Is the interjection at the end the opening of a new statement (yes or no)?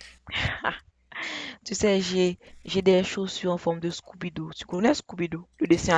yes